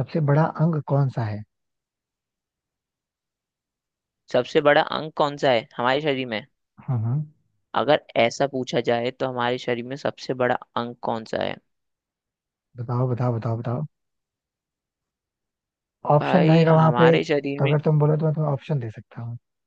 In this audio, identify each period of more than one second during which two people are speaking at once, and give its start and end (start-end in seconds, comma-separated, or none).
16.2-17.7